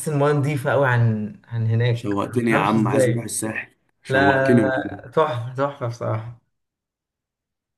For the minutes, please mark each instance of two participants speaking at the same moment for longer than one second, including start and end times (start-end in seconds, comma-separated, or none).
1.9-3.3